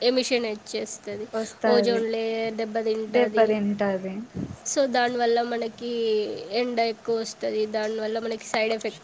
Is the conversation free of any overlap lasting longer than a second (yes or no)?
yes